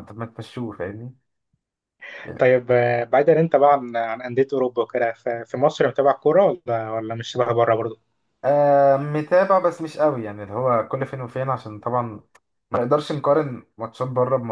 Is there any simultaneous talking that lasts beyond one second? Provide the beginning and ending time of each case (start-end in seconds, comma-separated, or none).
none